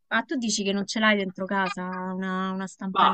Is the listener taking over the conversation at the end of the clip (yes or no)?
yes